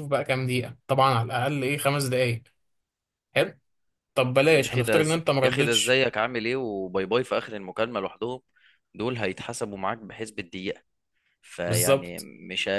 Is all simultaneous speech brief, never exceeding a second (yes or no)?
no